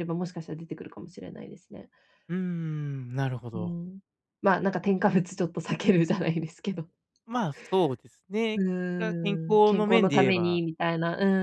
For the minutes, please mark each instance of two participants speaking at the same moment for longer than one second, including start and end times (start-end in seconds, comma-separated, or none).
8.6-10.6